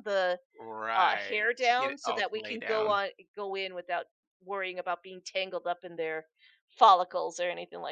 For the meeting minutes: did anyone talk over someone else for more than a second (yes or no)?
yes